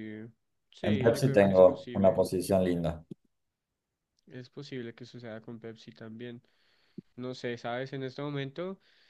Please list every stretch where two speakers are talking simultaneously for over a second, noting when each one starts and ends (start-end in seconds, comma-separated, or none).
0.8-2.3